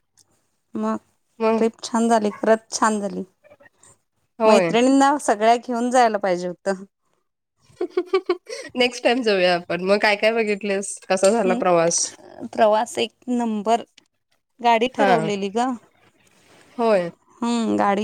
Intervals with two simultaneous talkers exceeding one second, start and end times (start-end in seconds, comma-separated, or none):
none